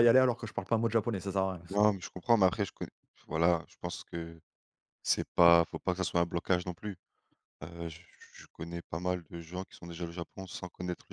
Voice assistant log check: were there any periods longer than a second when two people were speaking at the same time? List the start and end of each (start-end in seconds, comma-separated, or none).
none